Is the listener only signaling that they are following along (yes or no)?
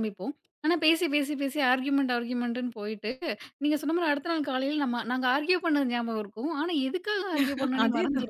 yes